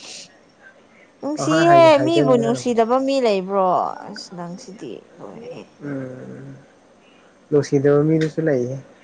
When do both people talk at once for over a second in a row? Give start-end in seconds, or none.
1.4-2.8